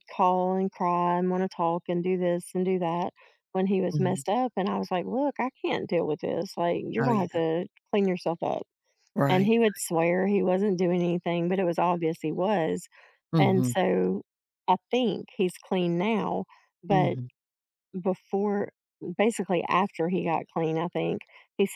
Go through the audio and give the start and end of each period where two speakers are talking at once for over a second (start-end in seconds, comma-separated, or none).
none